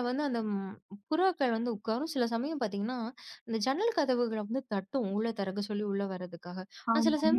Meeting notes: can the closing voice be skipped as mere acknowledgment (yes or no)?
yes